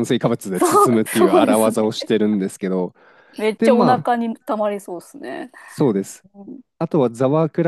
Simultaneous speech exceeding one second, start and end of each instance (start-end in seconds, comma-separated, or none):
0.5-1.9